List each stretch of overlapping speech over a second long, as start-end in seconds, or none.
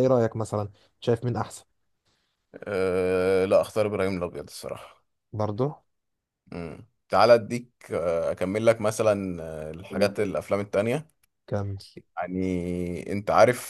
none